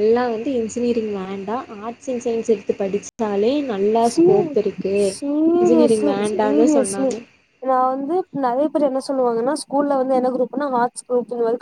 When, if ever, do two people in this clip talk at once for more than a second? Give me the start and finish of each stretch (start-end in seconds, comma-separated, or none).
5.6-7.1